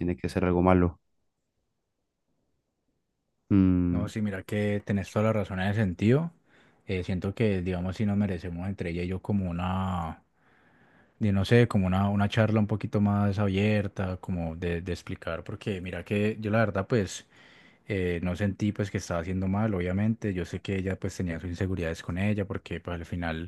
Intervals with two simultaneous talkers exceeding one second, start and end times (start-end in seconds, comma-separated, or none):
none